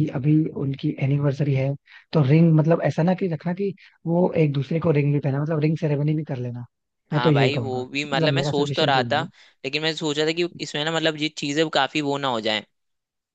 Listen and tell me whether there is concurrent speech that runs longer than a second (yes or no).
yes